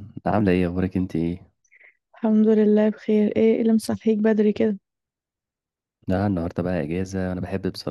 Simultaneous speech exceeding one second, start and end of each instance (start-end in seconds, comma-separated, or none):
none